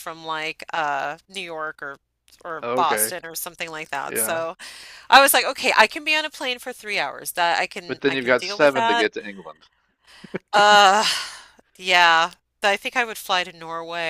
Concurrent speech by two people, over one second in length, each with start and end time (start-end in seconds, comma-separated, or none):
7.8-9.1